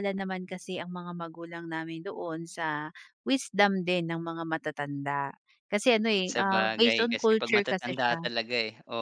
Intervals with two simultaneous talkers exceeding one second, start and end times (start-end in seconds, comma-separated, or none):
6.2-8.3